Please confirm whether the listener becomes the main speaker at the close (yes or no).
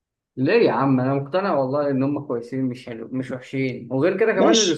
yes